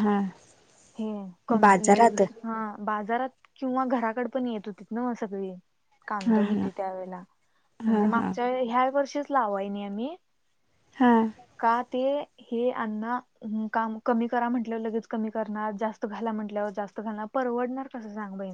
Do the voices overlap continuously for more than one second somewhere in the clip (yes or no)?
no